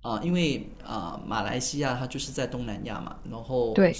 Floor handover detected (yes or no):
no